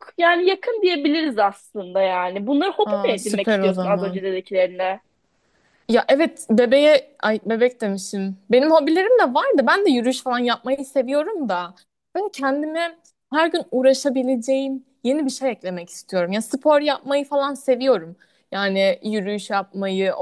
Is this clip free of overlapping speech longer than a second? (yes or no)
no